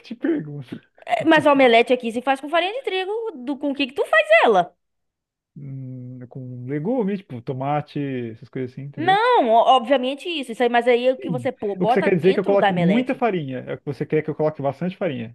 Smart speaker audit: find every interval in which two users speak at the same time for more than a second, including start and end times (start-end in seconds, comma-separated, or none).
11.2-13.2